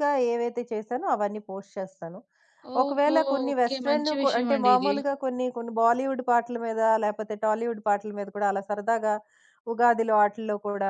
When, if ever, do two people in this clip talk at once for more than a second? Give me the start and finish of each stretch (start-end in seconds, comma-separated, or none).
2.8-4.9